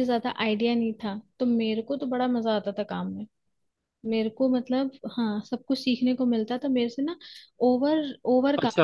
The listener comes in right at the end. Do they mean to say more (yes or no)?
no